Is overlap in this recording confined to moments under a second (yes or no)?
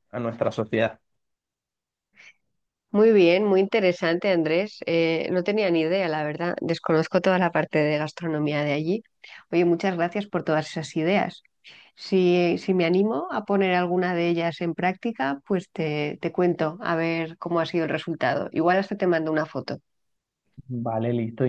yes